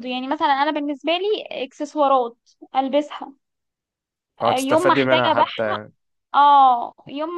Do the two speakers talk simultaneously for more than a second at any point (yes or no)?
yes